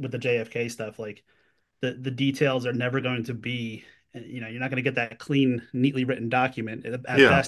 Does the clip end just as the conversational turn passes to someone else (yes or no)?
no